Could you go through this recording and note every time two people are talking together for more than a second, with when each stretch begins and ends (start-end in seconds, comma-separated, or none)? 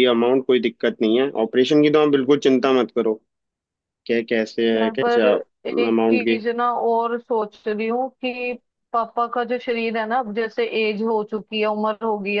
none